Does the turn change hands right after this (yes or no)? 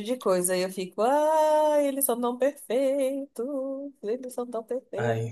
yes